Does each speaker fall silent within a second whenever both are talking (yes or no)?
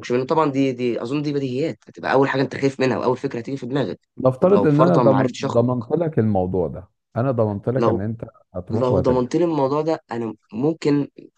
no